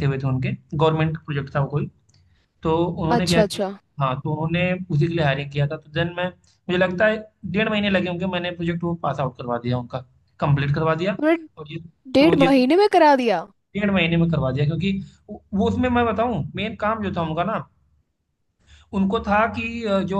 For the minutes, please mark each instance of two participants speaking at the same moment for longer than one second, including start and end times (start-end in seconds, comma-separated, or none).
none